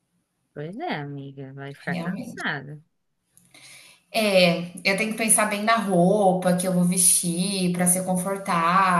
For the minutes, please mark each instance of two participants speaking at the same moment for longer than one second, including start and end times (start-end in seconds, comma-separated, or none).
none